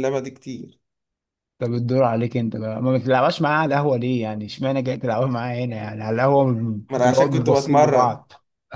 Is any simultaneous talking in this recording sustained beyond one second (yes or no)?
yes